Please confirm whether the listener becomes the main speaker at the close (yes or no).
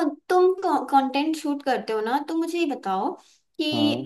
no